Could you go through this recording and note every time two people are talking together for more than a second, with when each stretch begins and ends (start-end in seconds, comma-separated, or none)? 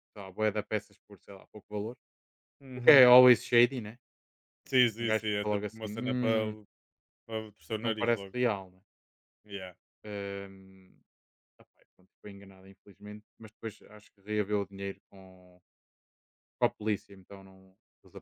5.0-6.4